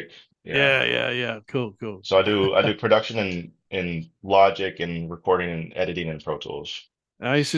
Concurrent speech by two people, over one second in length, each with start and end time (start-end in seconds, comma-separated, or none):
none